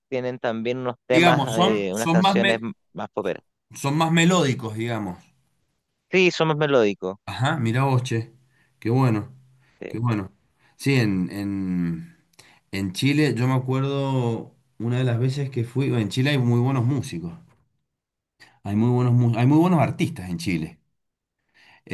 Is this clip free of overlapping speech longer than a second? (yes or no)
no